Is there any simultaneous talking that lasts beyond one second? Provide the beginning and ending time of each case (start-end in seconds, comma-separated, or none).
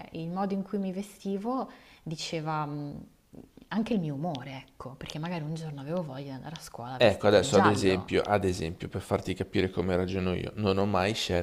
7.0-8.2